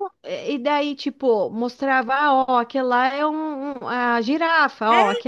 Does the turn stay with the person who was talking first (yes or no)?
no